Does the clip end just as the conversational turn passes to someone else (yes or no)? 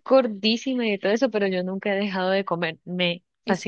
yes